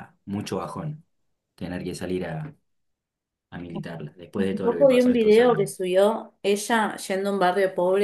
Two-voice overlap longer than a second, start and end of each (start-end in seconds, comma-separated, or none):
4.4-5.7